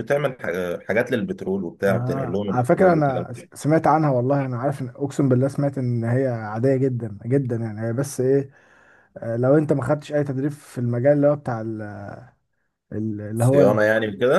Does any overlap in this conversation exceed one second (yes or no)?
yes